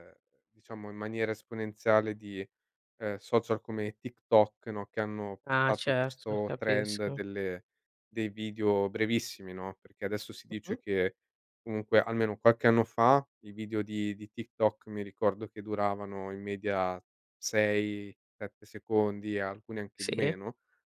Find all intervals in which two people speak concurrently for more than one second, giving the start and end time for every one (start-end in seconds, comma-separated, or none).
5.4-7.2